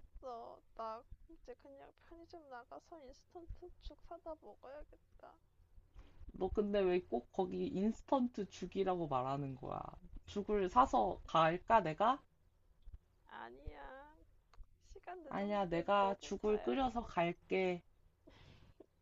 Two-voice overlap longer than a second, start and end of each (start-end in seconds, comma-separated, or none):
15.3-17.1